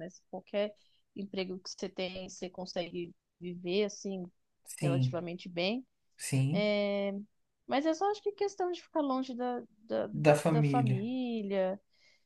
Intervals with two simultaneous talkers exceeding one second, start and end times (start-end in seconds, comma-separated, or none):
none